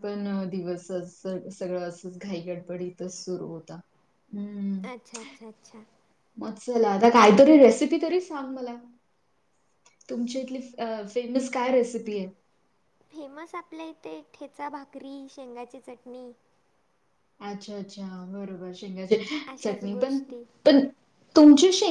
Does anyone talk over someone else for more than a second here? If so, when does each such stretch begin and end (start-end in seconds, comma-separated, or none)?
none